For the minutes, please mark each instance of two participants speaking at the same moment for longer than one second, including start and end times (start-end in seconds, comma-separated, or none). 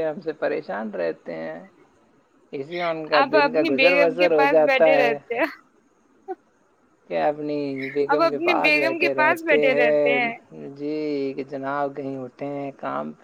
3.2-5.2, 8.1-10.1